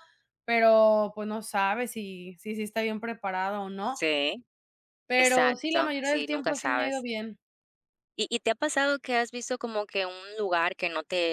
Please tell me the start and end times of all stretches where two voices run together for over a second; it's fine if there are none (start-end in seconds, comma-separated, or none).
5.2-7.0